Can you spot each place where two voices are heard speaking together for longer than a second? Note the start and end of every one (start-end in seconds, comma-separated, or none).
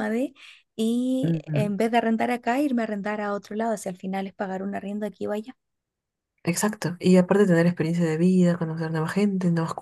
none